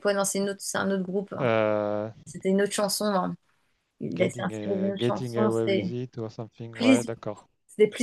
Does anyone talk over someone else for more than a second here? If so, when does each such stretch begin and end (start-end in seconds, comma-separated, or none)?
4.1-5.9